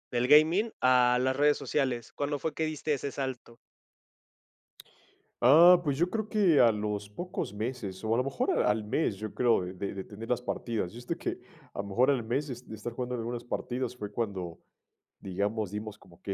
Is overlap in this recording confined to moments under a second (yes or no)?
yes